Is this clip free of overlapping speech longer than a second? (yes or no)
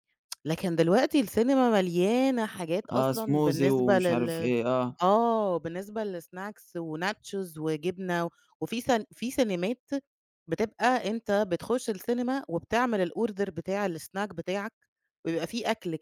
no